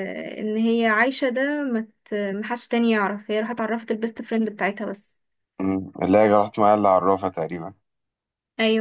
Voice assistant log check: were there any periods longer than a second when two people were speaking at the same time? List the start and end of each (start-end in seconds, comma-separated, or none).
none